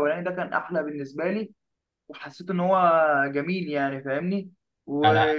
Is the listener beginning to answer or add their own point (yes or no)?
no